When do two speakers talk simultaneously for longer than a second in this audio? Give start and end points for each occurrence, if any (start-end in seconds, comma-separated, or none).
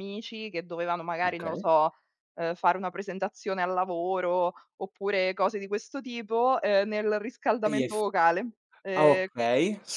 none